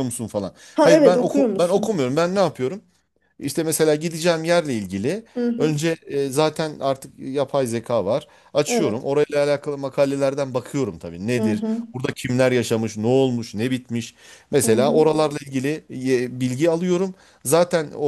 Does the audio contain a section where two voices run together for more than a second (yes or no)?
yes